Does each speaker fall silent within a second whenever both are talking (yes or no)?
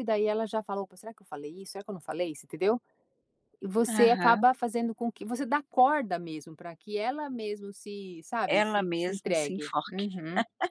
no